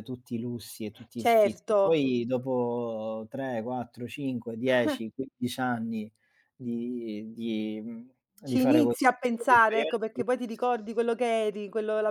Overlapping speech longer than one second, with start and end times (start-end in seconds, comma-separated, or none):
8.5-10.1